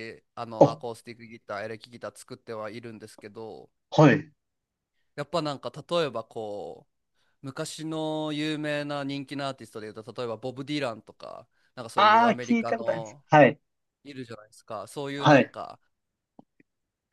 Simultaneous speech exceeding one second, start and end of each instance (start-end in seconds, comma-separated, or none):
11.9-13.2